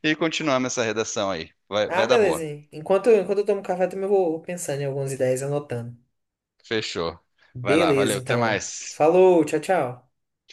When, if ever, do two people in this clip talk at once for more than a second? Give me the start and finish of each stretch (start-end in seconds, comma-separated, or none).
7.6-9.1